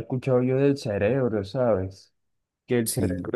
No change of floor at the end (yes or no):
yes